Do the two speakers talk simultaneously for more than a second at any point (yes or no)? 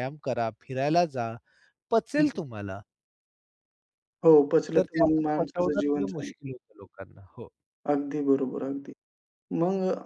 yes